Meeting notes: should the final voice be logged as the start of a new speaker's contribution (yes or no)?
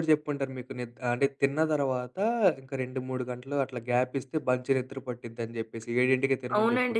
yes